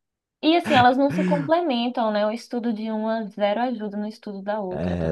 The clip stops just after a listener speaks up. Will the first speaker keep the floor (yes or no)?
no